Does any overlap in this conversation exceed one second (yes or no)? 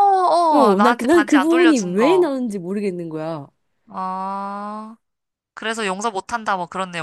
yes